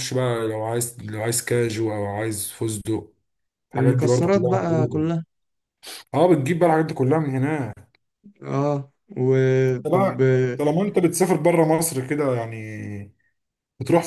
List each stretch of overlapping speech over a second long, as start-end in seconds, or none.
3.7-5.1